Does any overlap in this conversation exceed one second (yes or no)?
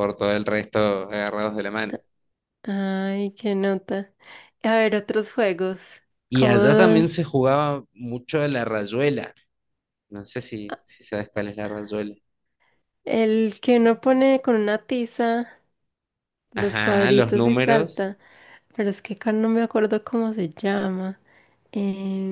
yes